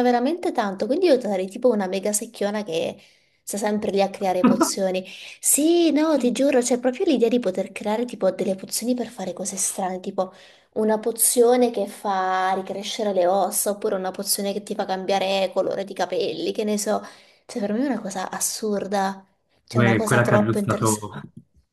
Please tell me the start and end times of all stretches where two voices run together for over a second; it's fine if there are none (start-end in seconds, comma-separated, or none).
19.7-21.1